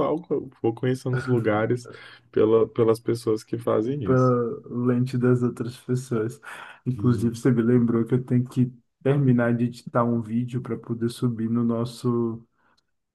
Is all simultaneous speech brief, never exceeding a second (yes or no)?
yes